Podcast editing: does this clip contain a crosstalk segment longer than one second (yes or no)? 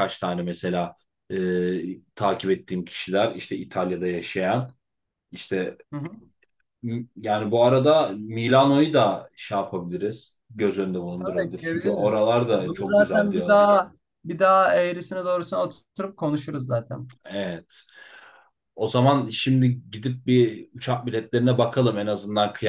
yes